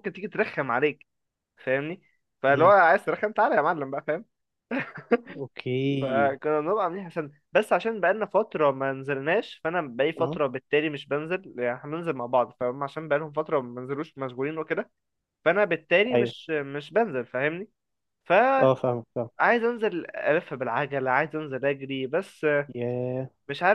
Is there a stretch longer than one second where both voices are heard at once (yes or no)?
no